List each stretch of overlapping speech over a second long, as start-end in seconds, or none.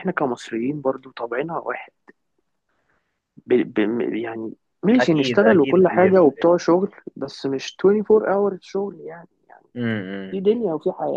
5.0-6.5